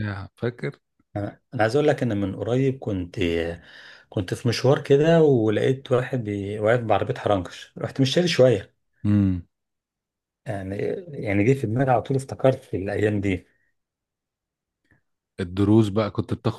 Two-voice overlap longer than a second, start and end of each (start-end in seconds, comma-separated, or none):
none